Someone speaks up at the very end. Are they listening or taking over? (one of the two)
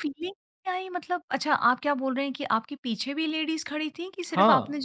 taking over